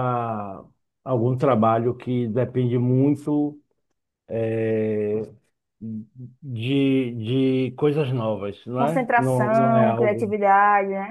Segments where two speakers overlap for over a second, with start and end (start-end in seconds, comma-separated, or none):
8.8-10.4